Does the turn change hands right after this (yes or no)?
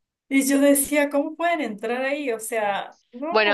yes